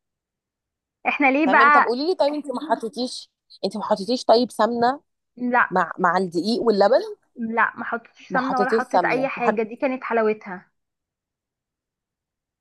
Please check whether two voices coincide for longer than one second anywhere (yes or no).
yes